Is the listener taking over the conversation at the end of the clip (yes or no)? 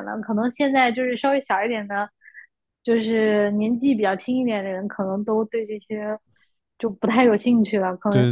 yes